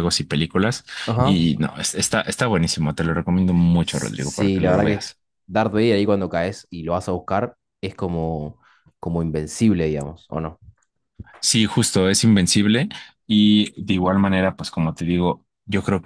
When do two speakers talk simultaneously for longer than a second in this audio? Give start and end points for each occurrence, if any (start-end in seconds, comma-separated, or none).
3.8-5.1